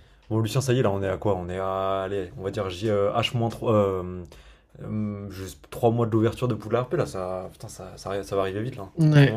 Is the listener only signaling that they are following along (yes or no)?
no